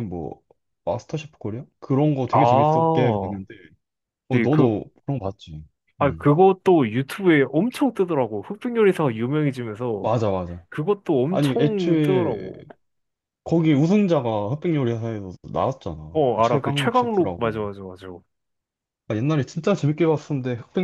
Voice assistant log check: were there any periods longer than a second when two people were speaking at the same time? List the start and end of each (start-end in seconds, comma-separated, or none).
11.3-12.5, 16.1-17.6